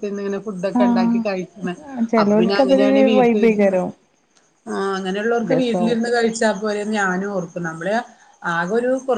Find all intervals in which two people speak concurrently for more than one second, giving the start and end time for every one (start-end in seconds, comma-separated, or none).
2.2-3.8